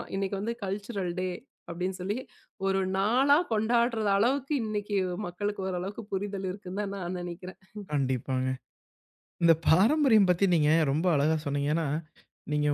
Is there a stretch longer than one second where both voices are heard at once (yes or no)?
no